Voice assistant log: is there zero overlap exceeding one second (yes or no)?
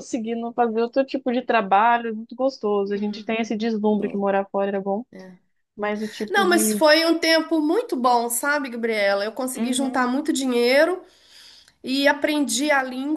yes